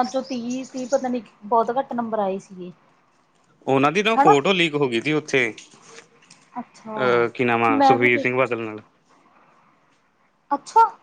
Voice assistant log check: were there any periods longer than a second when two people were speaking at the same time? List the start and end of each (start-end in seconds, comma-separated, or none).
none